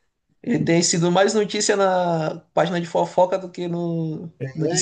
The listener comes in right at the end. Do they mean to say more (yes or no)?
yes